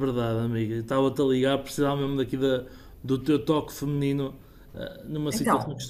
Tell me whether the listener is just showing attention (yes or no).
yes